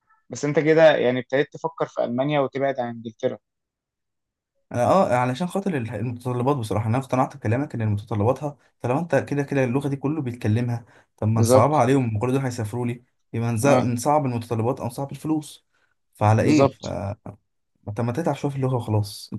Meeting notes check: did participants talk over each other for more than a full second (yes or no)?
no